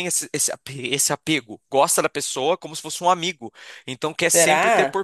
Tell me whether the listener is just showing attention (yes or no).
yes